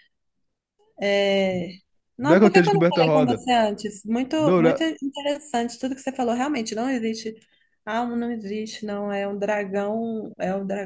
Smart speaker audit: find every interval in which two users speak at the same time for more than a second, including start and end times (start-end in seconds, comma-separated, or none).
2.2-3.4